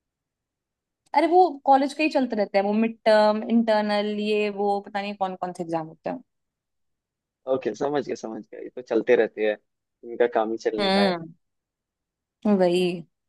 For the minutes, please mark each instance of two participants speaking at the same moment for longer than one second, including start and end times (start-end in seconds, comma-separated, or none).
none